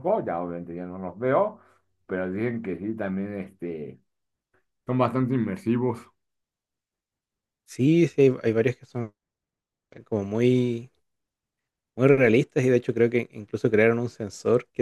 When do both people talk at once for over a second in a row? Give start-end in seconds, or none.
none